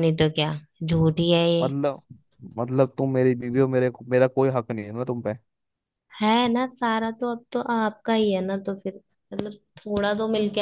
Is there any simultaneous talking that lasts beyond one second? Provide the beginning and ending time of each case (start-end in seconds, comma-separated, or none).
none